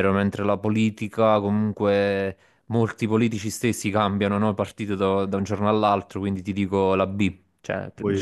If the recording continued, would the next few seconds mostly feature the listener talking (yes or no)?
yes